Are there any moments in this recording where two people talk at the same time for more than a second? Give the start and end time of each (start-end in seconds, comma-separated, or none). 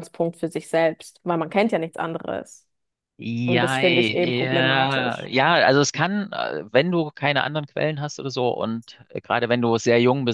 3.5-5.3